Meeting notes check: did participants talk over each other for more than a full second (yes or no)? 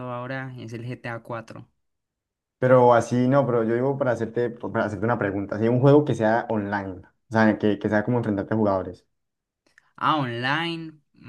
no